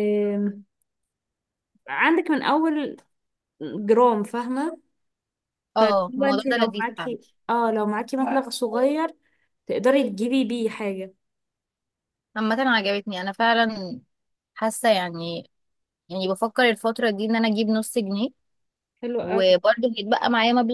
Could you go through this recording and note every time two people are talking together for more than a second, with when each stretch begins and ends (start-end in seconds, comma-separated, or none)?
5.8-7.2